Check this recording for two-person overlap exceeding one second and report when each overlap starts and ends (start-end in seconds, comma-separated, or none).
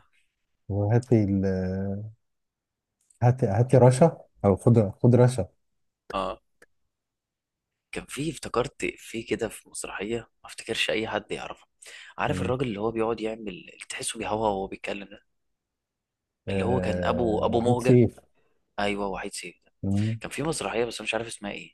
16.5-18.0